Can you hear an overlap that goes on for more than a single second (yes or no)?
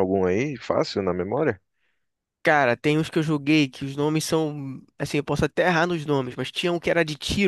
no